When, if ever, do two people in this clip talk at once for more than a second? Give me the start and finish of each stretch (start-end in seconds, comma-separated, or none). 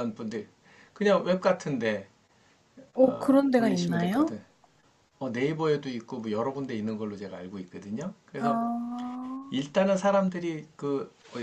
3.0-4.3